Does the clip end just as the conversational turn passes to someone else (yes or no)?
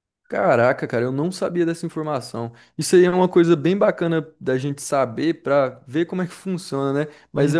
no